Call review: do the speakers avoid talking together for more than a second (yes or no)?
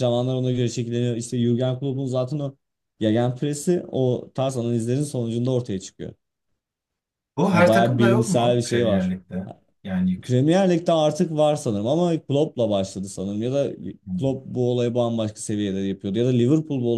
no